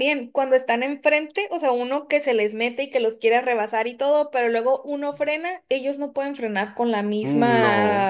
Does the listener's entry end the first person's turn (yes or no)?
no